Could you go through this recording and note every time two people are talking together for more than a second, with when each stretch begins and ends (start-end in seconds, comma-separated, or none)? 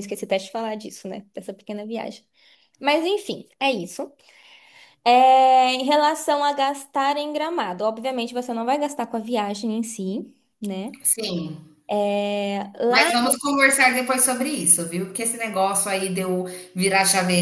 none